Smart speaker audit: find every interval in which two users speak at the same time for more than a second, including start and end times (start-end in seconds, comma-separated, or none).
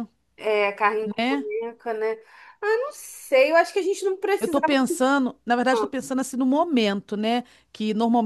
none